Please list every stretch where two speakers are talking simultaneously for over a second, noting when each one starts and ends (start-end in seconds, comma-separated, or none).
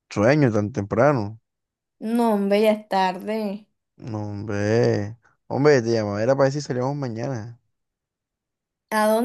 none